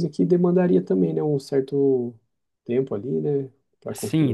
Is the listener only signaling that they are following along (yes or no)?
no